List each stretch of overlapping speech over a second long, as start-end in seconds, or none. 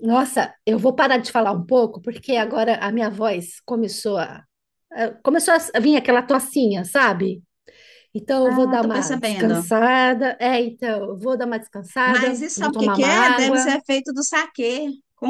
8.4-9.6, 12.0-13.7